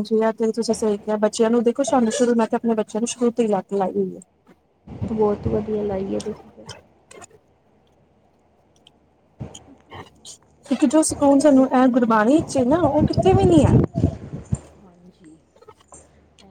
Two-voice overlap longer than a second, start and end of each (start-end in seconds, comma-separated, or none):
none